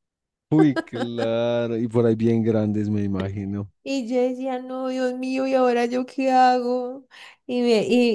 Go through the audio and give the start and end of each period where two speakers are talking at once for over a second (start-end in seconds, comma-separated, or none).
none